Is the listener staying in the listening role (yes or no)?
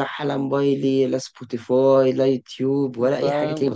no